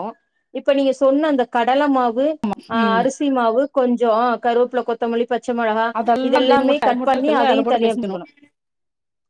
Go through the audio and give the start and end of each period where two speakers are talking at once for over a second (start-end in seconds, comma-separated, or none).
6.3-8.2